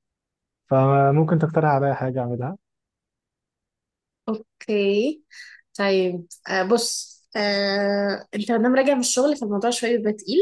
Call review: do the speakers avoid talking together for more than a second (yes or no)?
yes